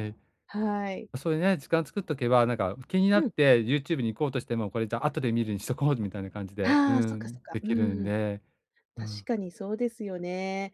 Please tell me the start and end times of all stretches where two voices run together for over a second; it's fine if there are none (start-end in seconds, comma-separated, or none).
6.6-8.1